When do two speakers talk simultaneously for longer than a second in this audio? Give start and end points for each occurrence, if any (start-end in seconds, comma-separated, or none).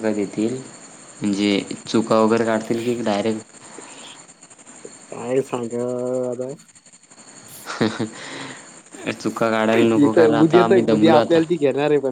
10.0-11.4